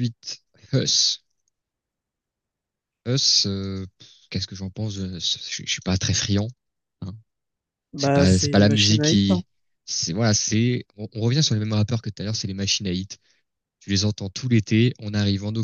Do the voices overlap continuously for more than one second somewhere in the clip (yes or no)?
yes